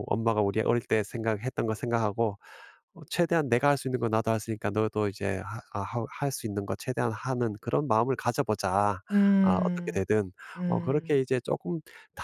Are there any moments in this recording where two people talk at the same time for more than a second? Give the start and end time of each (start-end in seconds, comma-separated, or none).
none